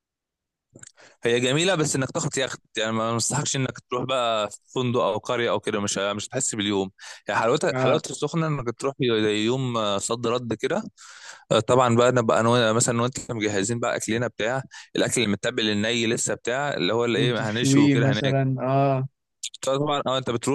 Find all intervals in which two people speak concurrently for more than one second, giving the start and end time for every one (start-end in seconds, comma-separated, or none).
17.1-18.5